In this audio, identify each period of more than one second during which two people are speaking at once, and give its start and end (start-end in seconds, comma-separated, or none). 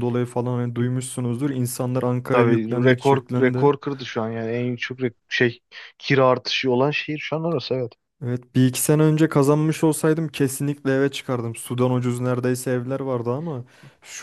2.3-3.7